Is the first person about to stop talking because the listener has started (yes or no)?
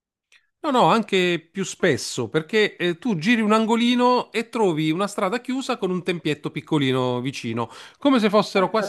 no